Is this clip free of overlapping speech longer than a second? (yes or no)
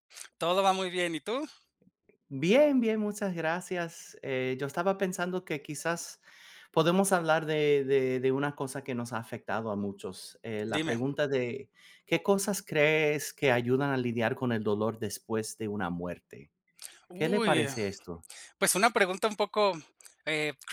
yes